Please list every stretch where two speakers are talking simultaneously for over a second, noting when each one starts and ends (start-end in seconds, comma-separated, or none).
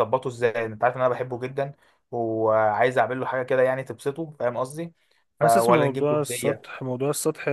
5.4-6.7